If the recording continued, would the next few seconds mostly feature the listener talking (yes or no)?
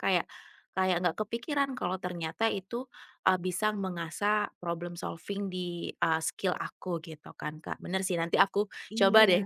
no